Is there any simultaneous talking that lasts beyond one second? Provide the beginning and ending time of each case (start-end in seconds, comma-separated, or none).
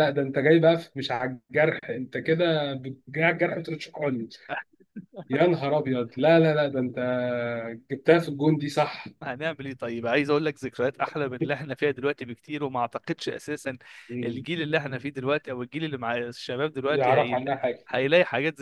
none